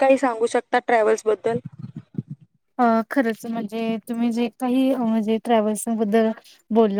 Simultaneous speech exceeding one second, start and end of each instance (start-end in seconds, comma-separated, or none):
none